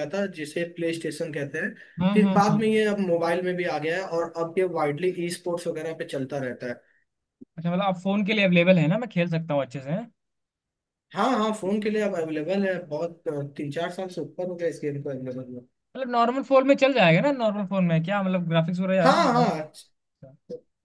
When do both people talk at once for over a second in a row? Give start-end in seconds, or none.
none